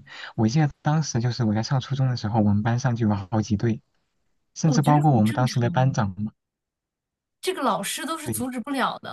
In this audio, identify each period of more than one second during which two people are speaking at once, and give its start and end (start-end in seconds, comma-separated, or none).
4.7-6.0